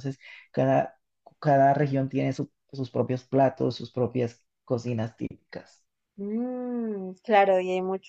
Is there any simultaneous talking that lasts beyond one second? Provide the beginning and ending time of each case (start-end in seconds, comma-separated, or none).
none